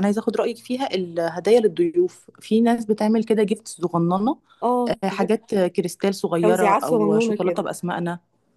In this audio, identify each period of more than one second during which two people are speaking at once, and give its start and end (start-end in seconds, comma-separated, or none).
6.4-7.6